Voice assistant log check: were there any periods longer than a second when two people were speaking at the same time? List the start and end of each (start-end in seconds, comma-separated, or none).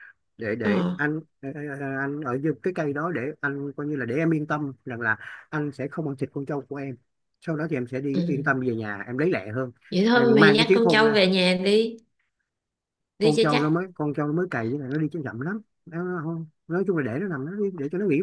10.1-11.3